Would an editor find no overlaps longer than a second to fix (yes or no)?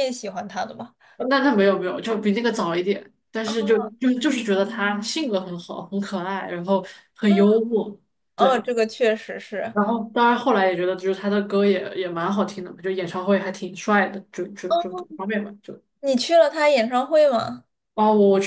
yes